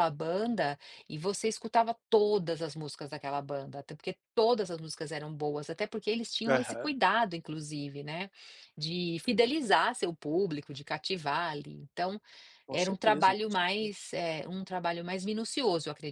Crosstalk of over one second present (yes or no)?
yes